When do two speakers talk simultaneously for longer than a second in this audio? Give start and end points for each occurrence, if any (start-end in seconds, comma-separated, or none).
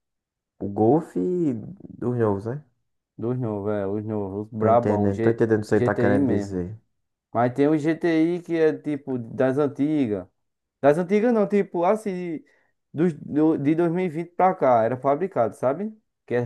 4.6-6.6